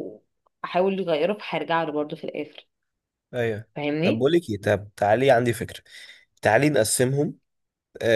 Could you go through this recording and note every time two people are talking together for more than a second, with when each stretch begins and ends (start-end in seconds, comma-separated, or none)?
none